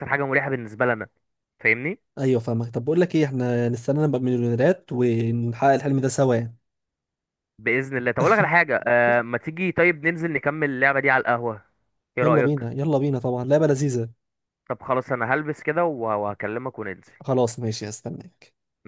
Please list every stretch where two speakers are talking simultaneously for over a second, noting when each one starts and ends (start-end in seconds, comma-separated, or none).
none